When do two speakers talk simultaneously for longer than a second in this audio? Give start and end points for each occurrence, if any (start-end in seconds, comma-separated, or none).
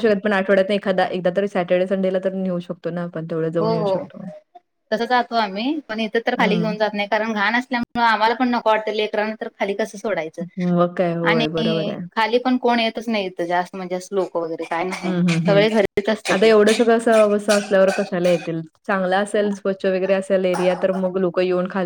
none